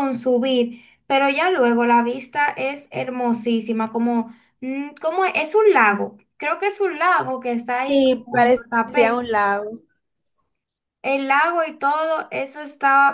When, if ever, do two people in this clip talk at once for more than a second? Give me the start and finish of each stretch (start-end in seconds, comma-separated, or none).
7.9-9.2